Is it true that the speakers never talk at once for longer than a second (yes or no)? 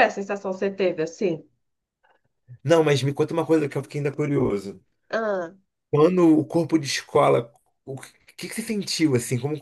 yes